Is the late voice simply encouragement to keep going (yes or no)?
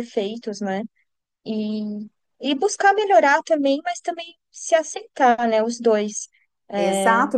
no